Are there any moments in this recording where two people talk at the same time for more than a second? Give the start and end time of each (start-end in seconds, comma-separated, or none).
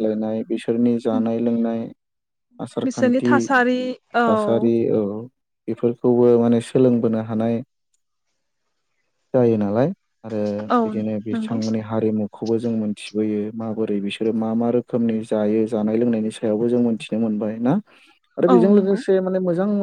none